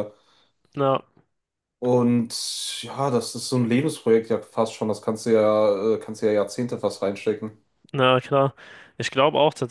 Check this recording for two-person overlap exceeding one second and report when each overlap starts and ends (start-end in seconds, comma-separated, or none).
none